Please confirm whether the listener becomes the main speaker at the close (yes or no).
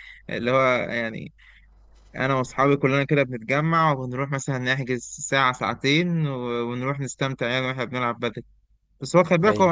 no